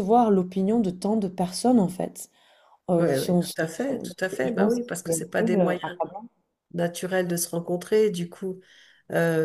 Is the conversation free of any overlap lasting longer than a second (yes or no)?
no